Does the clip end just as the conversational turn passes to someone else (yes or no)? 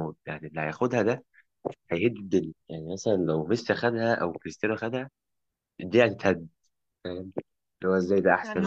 yes